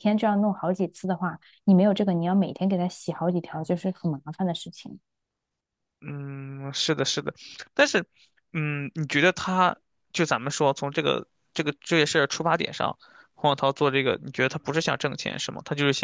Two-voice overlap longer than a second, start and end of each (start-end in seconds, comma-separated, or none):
none